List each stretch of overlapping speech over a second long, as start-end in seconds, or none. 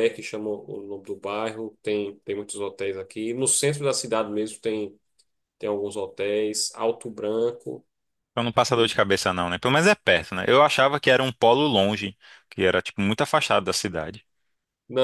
none